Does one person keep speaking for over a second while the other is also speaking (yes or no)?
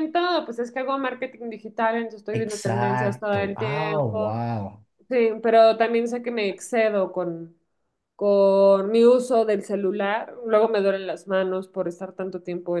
yes